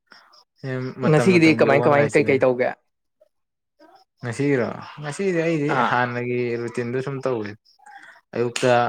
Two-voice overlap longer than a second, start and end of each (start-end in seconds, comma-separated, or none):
1.1-2.3